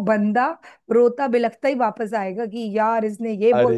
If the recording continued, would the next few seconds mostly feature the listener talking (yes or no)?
no